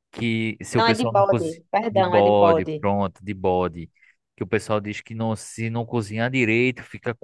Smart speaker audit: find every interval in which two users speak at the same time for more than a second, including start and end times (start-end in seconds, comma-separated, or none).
0.8-2.9